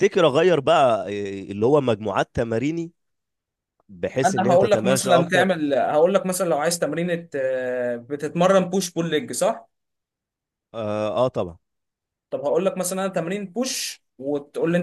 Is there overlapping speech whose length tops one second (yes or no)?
yes